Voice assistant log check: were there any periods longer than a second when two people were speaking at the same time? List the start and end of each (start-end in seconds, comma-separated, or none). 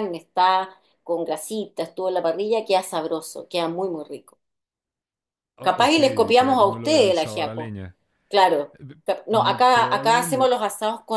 5.6-7.7, 8.8-10.5